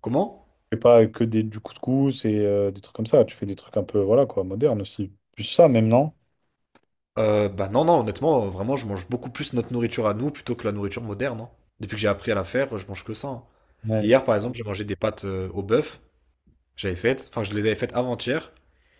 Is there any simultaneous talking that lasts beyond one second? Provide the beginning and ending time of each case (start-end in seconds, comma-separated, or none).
none